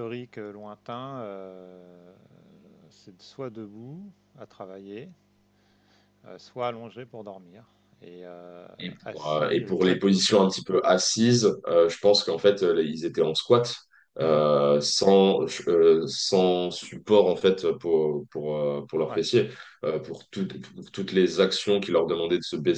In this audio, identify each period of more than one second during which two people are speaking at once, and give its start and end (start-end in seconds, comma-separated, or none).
9.0-10.4